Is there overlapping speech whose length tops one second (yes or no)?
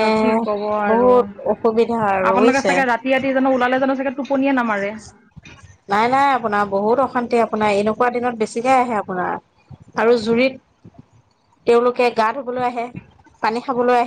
yes